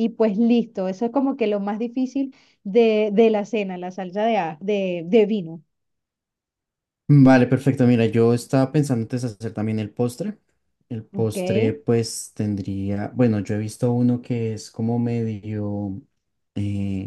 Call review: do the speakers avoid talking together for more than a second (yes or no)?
yes